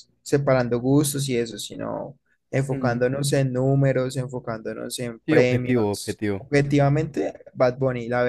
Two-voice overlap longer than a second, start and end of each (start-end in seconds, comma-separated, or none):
5.3-6.5